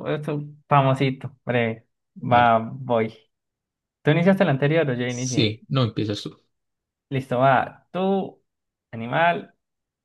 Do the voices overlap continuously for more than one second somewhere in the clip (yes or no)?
no